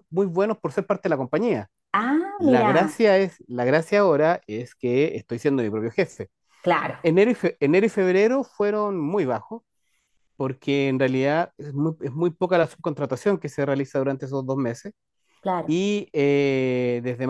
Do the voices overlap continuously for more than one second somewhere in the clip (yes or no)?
no